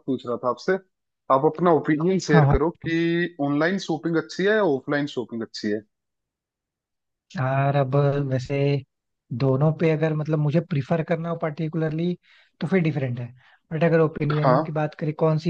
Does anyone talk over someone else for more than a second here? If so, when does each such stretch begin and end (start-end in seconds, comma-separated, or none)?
none